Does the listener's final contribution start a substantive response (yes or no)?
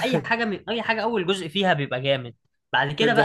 no